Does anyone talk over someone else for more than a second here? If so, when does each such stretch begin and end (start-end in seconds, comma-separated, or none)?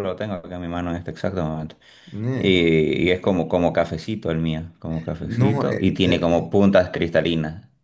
5.2-6.5